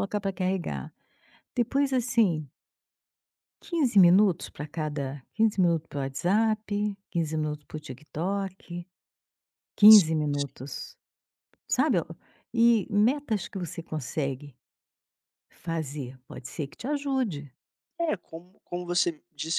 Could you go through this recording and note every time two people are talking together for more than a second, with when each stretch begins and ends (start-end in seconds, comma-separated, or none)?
none